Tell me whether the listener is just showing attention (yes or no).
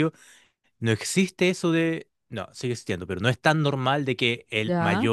yes